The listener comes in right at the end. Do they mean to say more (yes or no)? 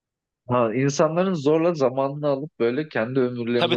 yes